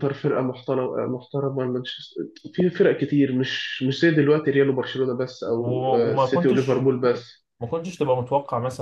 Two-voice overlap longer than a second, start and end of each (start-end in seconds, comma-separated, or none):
5.5-6.9